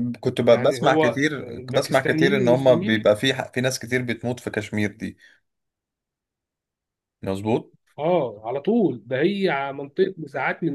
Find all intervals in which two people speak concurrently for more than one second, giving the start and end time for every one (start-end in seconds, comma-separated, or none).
0.5-3.1